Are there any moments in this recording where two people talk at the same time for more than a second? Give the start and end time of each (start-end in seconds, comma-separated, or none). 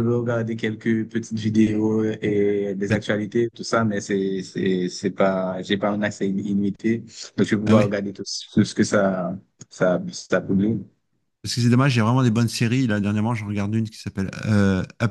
none